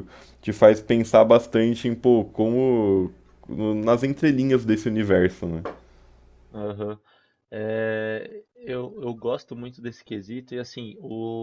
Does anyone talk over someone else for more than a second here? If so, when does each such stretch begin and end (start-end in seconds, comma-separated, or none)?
none